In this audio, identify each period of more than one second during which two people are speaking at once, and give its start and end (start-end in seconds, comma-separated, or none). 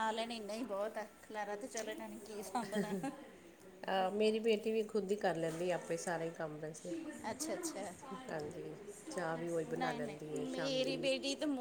9.8-11.1